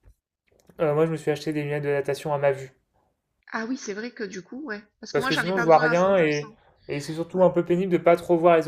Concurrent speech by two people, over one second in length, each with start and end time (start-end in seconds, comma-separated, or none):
5.1-6.5